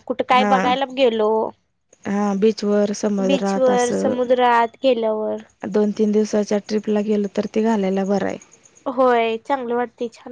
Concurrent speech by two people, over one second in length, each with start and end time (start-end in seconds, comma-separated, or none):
none